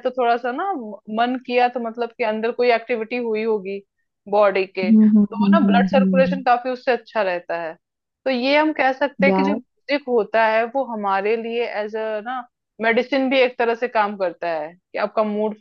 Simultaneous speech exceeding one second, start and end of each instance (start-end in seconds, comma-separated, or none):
4.8-6.4